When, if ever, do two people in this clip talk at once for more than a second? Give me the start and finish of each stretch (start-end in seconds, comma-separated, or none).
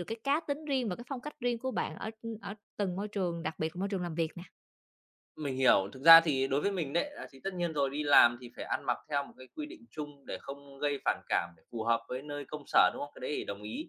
none